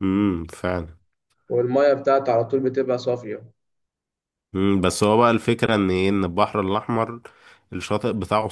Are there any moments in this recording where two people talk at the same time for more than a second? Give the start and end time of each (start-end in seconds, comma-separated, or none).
none